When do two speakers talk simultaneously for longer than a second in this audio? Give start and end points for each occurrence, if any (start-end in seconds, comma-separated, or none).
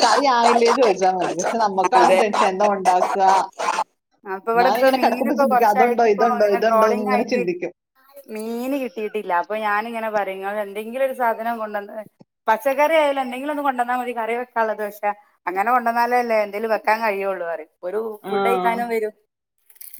4.6-7.4